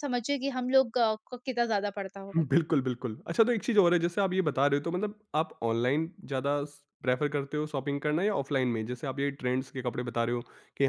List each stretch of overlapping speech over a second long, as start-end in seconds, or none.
none